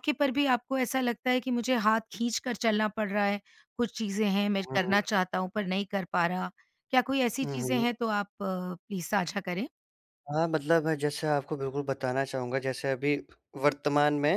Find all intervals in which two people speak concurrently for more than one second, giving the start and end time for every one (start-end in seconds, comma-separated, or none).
none